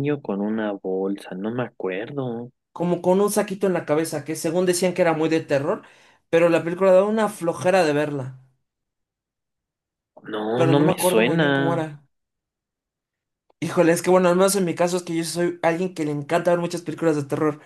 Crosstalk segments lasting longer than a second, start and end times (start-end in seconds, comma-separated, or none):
10.5-11.8